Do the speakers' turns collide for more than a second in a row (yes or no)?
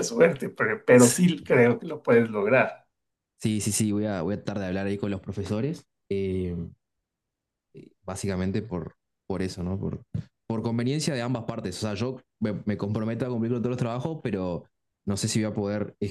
no